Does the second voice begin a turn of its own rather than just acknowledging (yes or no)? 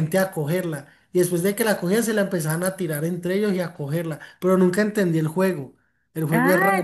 yes